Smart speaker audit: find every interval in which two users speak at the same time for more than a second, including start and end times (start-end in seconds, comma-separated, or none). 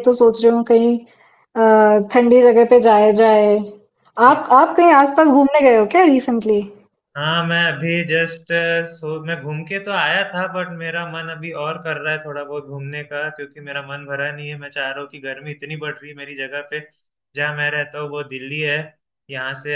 none